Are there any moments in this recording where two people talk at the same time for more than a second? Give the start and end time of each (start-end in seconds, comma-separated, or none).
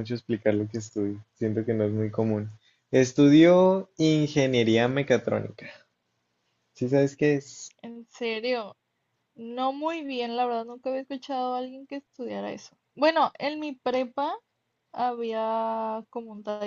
none